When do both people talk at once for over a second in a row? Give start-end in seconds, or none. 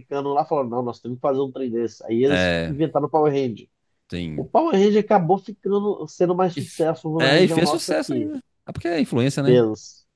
6.5-8.3